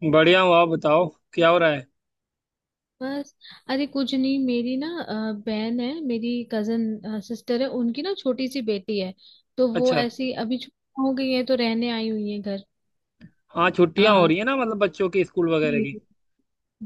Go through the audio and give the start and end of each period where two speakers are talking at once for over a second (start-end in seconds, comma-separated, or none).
none